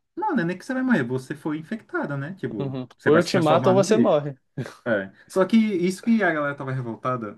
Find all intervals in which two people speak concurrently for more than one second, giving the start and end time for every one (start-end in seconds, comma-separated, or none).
2.6-4.2